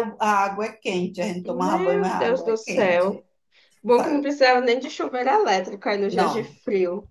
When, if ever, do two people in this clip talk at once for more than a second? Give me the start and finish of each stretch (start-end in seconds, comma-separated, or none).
1.4-3.2